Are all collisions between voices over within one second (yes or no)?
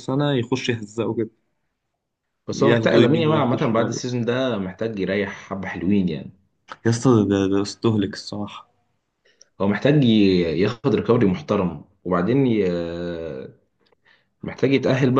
no